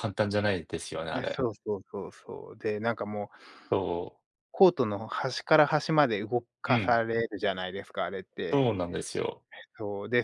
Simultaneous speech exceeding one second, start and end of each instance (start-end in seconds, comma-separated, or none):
none